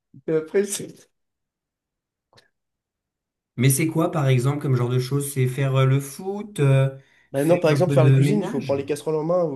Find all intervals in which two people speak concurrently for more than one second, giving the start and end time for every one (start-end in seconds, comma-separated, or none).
7.3-8.8